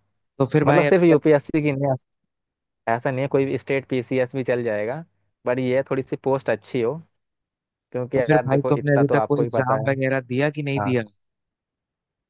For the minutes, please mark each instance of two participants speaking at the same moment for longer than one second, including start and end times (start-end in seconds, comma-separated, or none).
8.2-9.9